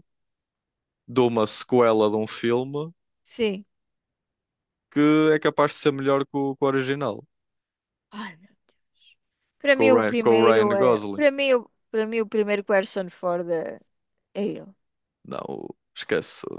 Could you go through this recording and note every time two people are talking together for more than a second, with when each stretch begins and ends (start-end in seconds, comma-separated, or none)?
9.7-11.2